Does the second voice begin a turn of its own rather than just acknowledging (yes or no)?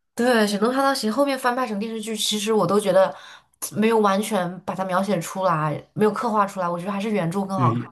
yes